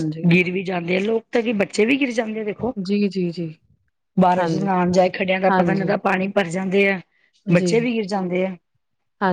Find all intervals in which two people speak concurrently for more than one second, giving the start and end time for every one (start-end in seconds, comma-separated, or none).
none